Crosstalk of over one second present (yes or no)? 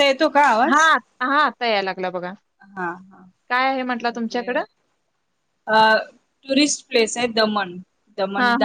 no